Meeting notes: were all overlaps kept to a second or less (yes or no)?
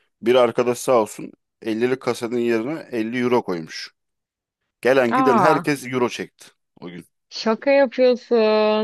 yes